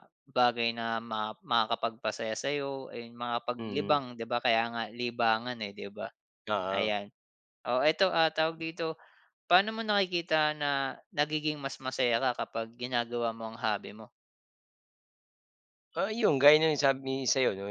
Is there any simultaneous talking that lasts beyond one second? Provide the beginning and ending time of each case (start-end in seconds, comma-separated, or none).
none